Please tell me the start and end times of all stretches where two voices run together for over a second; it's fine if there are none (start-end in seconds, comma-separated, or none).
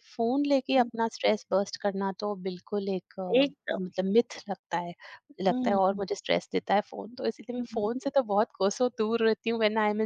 none